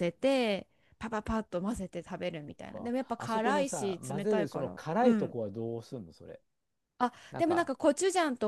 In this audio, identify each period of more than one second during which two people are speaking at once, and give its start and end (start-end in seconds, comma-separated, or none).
2.5-5.3